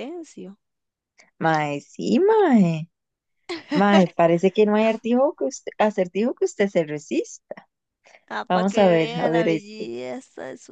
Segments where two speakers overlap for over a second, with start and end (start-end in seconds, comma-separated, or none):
8.5-9.8